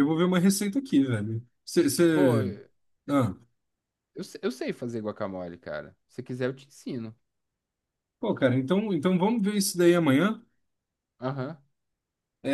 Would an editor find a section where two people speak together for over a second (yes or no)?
no